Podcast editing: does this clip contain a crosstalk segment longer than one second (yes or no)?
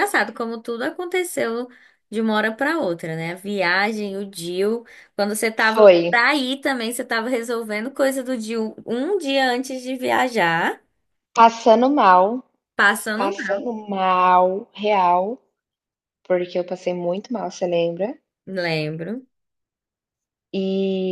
no